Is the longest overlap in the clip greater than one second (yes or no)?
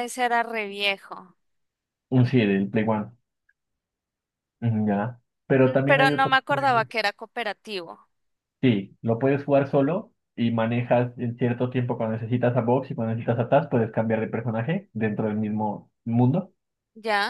yes